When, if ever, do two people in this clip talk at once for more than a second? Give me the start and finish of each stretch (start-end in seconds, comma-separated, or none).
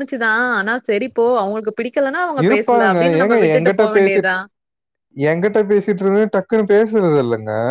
none